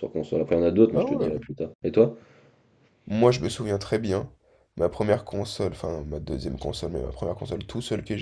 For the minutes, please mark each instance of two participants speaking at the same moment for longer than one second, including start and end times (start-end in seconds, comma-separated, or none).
none